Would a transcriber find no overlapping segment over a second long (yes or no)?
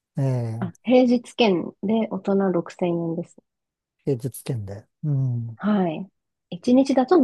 yes